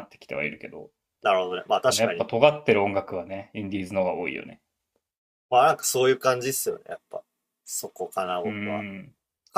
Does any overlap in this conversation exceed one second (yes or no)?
no